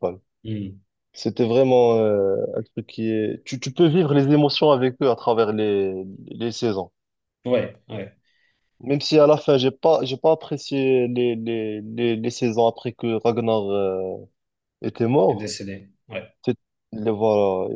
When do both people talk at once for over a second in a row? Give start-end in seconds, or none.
none